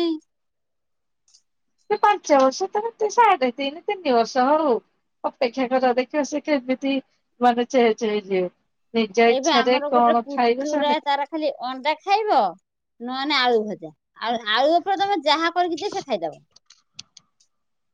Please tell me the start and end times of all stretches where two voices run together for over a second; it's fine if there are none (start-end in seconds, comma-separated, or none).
9.3-10.9